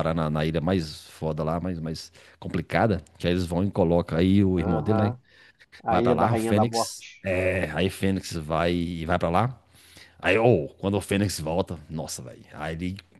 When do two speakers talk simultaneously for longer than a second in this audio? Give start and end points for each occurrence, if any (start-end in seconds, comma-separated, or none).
5.9-7.3